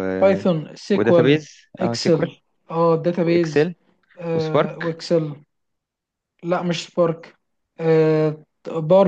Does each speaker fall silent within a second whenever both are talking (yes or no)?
no